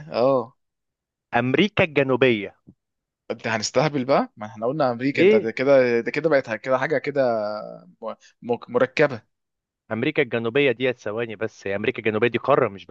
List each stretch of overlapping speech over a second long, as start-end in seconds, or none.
none